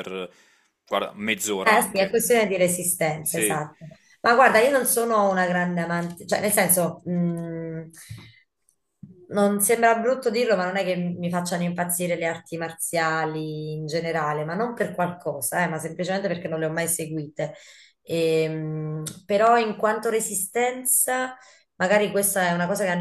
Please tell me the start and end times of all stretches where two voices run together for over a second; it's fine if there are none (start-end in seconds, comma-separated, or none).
none